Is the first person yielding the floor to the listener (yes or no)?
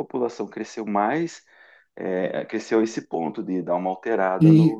yes